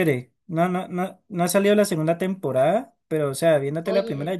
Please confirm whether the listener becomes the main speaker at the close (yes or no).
no